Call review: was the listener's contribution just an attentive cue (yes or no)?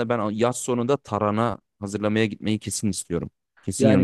no